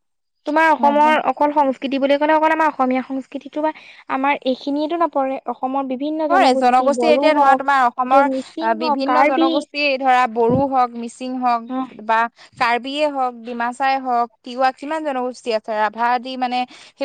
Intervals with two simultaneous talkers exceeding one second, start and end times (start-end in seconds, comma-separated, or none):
7.0-9.5